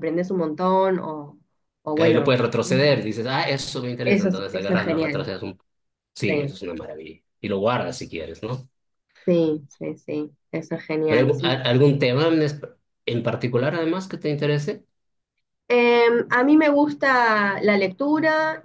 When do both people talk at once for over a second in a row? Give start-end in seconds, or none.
4.0-5.3